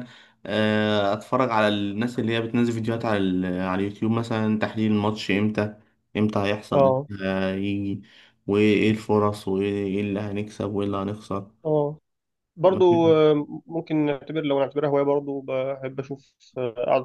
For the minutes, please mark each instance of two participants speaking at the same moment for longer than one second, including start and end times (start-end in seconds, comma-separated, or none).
none